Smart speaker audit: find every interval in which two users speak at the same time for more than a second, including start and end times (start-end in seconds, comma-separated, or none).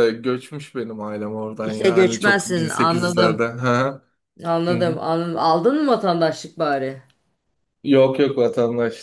1.6-3.4